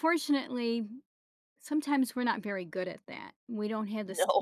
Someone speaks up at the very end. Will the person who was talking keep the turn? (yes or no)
yes